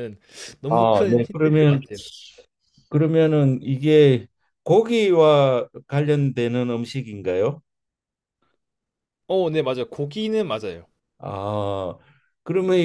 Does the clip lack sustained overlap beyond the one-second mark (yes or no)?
no